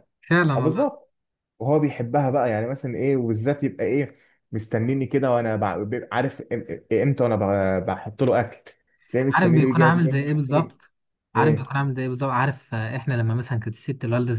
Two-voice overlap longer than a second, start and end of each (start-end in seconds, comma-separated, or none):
9.3-10.7